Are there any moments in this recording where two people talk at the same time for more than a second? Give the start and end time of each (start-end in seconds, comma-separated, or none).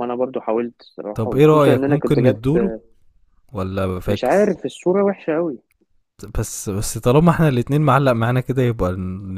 1.2-2.6